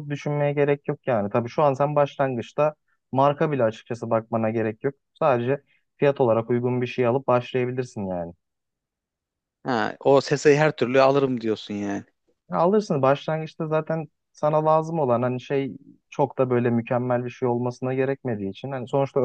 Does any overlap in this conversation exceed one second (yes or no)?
no